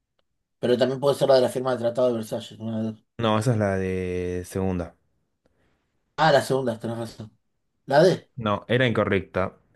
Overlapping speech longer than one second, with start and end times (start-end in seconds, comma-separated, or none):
none